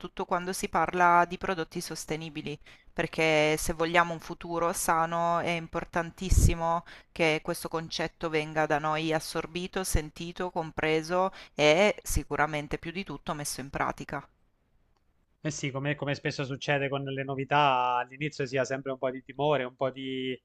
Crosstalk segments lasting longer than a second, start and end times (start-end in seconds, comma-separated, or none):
none